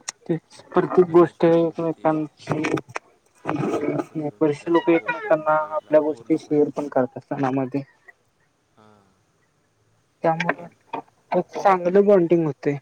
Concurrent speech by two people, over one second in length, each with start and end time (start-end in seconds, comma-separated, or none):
0.6-2.1, 3.7-6.7